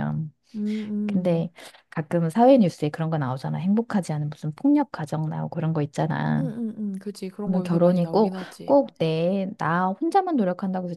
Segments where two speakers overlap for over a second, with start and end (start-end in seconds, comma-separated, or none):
7.4-8.8